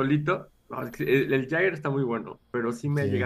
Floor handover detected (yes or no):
no